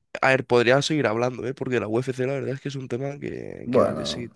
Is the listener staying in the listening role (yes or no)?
no